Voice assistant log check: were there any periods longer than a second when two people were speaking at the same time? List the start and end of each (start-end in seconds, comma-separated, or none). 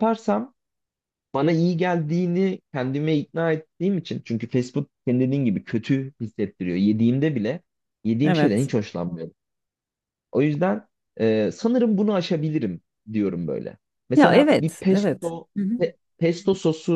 14.1-15.8